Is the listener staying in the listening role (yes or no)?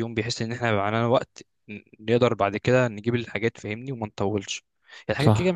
yes